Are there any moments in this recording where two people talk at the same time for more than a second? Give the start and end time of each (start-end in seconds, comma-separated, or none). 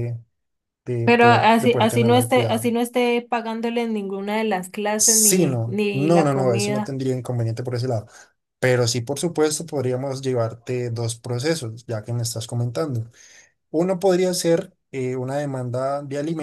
1.0-2.7, 5.0-7.0